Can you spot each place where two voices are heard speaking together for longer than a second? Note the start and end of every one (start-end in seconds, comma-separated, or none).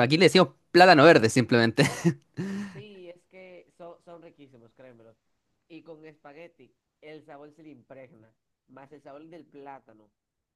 none